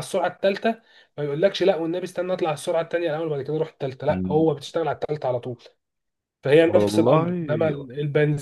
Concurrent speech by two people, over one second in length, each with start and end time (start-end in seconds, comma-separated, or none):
6.7-7.9